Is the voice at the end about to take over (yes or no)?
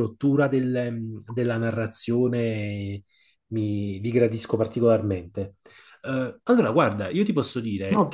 yes